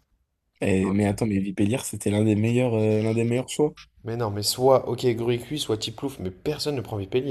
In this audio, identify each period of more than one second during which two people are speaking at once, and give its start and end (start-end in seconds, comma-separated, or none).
none